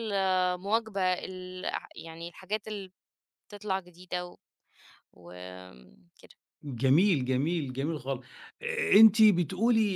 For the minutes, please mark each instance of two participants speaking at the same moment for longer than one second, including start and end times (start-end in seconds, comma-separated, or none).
none